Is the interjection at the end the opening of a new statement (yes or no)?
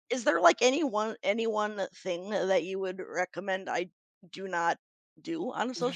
yes